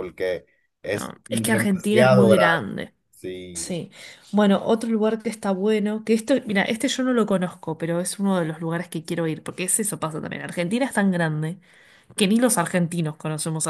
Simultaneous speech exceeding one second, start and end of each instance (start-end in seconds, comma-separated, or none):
0.9-2.6